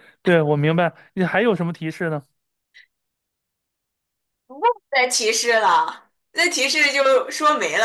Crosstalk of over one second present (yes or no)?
no